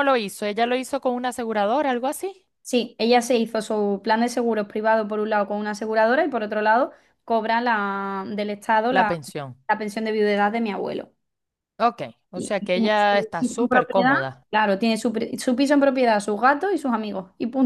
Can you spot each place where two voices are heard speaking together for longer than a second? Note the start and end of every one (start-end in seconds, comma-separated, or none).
12.3-14.1